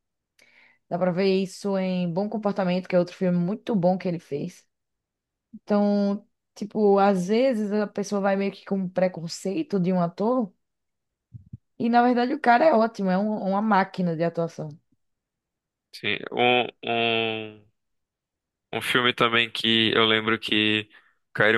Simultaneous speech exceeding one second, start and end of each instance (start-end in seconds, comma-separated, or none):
none